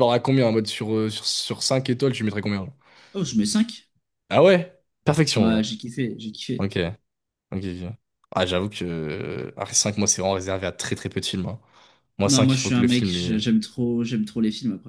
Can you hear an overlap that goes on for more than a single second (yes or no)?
yes